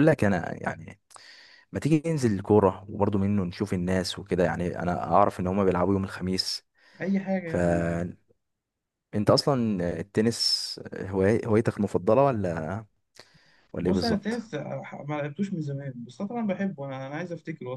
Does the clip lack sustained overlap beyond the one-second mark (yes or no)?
yes